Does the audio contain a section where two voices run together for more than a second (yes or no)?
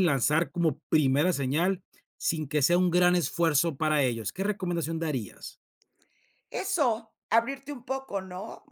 no